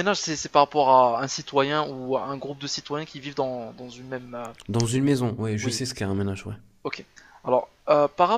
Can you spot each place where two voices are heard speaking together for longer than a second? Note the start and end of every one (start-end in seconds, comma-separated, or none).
none